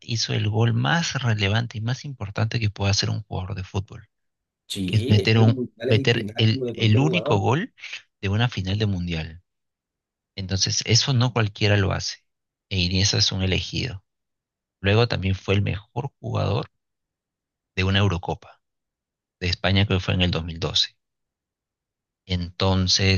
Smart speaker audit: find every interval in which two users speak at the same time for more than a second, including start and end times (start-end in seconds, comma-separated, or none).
4.9-7.4